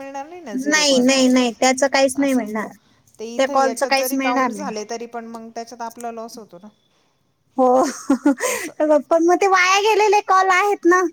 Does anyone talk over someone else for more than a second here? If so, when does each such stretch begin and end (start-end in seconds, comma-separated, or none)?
3.4-4.7